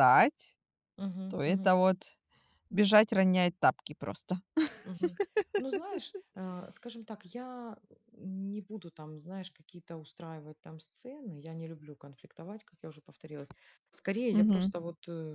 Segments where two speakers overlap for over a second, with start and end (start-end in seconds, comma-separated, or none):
none